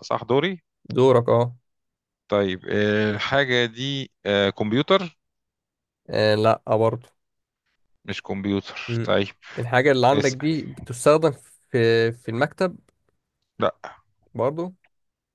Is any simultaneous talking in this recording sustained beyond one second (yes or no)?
no